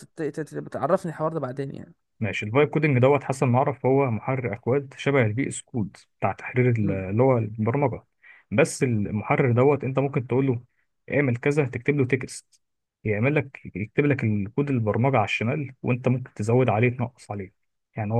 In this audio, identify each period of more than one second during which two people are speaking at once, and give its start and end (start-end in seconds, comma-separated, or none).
none